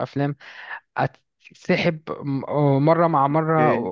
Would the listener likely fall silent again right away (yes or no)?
yes